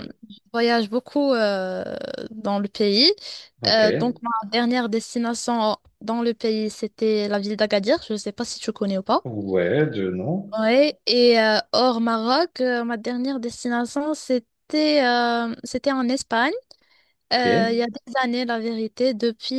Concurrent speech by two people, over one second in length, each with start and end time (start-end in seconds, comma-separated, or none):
none